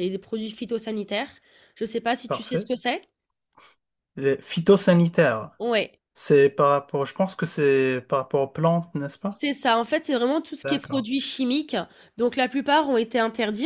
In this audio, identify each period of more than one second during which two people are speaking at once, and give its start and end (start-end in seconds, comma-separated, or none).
none